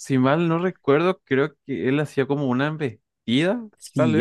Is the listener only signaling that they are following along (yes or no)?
no